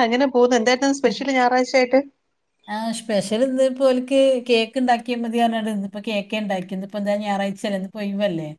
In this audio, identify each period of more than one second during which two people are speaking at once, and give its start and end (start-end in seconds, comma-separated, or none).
none